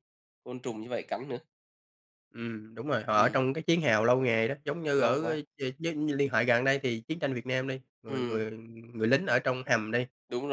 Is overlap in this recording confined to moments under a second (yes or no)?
yes